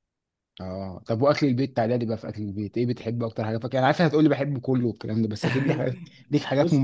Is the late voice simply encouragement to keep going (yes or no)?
no